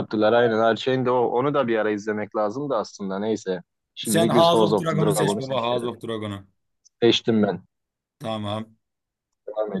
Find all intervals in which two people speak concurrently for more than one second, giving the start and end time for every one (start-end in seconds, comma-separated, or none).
4.0-5.9